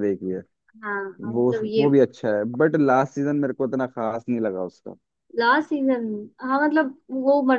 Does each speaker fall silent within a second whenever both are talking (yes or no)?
yes